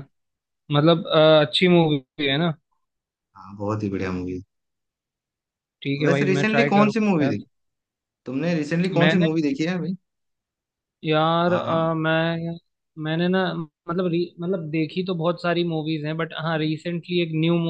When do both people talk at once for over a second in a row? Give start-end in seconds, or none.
6.0-7.3